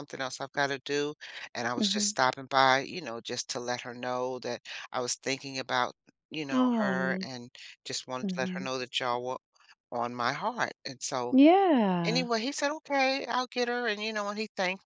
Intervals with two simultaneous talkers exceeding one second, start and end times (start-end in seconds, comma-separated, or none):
none